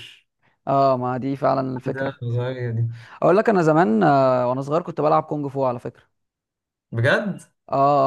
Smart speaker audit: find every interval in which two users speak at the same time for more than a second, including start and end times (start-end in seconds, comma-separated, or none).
none